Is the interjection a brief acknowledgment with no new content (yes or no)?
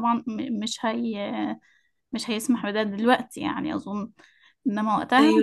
yes